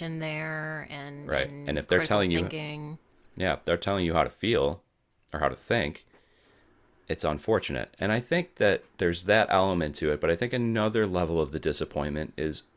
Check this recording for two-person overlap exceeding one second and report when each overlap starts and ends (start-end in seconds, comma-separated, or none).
1.2-2.5